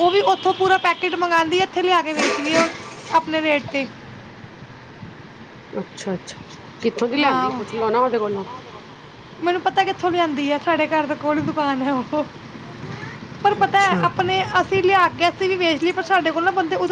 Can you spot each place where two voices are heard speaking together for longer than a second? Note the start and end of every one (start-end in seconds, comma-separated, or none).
none